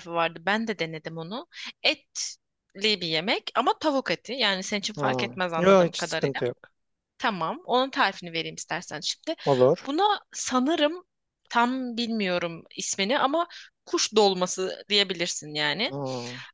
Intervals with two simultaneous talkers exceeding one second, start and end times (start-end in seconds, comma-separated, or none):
5.0-6.4